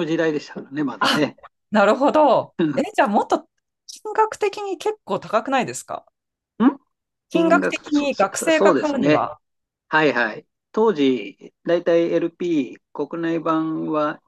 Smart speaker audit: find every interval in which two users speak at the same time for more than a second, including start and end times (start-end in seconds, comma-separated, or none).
7.3-9.3